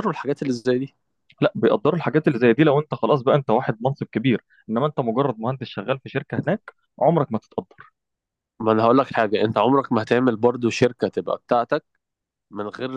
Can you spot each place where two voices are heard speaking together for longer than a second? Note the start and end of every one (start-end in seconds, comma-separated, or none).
none